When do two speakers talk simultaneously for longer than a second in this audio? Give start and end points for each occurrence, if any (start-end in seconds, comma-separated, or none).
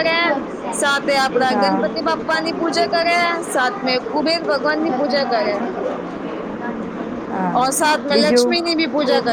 1.5-2.9